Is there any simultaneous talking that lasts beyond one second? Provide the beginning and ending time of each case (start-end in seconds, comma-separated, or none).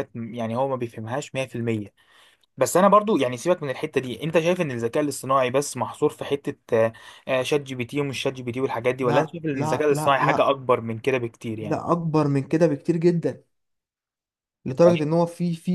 9.0-10.5